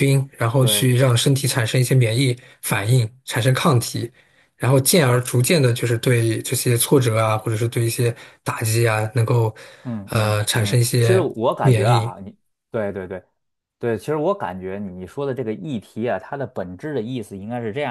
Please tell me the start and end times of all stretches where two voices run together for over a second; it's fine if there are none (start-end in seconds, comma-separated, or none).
10.1-12.1